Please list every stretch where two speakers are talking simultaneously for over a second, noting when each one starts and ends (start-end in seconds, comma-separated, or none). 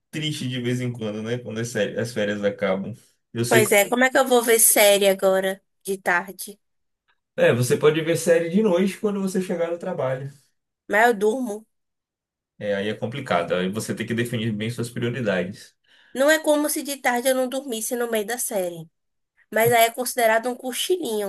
none